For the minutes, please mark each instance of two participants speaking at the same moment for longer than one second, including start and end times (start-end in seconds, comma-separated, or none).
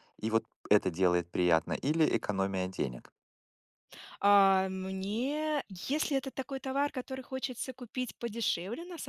none